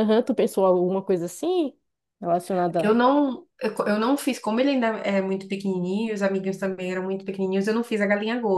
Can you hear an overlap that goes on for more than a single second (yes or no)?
no